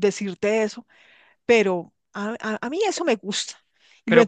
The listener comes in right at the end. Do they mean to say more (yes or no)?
yes